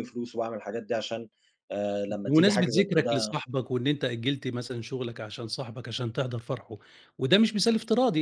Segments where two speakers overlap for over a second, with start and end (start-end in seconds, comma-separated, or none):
2.1-3.3